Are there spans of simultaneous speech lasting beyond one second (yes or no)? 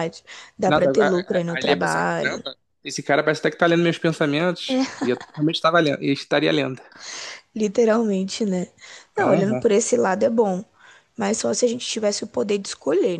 yes